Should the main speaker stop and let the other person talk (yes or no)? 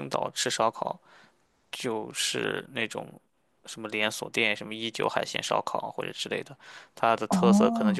yes